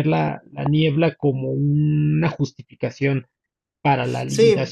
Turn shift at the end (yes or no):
yes